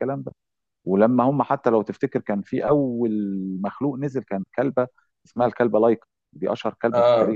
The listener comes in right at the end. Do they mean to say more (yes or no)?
no